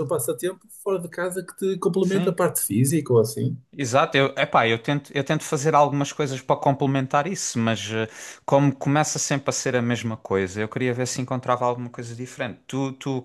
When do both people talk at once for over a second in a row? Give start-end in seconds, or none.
none